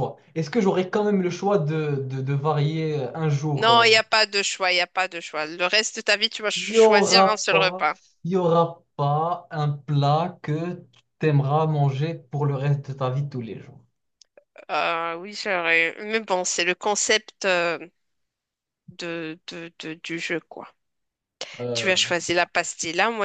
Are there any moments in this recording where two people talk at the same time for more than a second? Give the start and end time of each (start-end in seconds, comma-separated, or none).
6.5-7.9